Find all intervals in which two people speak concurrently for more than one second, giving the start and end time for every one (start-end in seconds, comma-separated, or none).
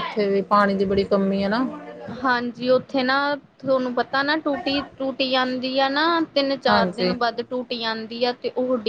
none